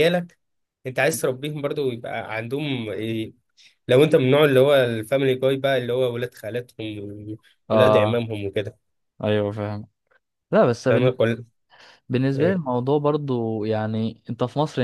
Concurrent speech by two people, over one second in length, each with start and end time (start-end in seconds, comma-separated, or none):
none